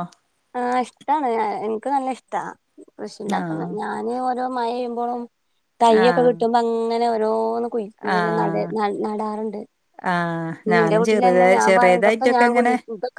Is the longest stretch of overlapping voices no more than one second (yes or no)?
no